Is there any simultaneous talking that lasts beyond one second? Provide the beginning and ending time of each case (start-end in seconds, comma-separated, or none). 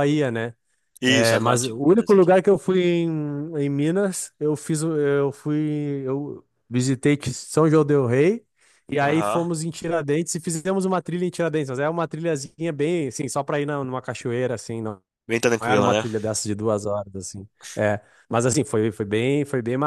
1.1-2.3